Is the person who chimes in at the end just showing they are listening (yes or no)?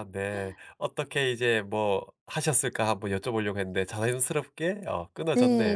no